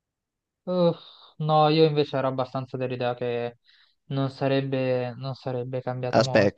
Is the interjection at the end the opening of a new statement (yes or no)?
yes